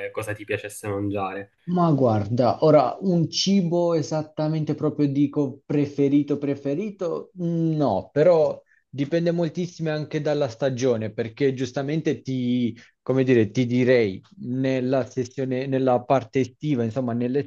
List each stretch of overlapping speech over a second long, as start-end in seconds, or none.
none